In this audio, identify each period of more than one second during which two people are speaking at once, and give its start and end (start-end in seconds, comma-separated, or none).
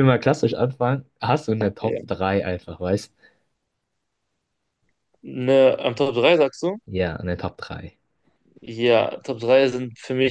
none